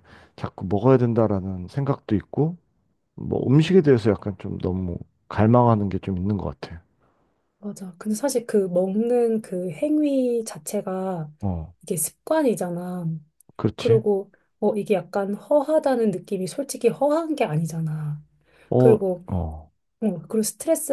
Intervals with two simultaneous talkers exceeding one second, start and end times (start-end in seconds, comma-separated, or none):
none